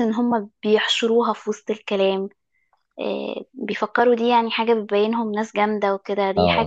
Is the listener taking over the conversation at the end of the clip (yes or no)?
yes